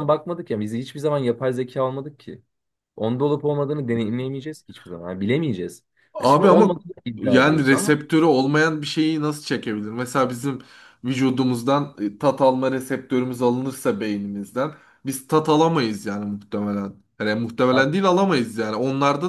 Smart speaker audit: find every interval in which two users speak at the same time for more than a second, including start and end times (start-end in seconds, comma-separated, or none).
6.2-8.0